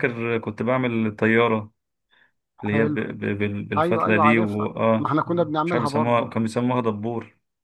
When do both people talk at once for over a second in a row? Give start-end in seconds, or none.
3.8-6.3